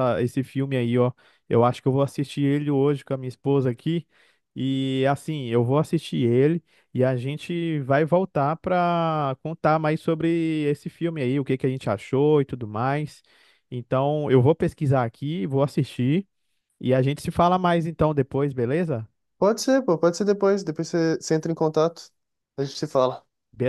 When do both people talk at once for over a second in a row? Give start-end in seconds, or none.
none